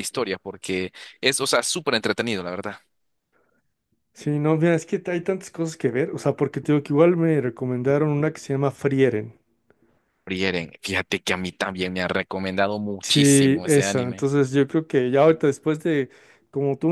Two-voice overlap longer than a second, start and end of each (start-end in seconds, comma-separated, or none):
13.0-14.3